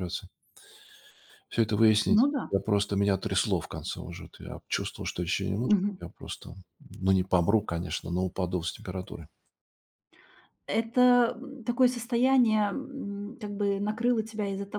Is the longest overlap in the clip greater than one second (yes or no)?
no